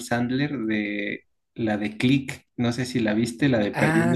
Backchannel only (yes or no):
no